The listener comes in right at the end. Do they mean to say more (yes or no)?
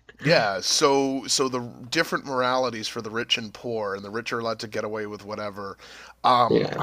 no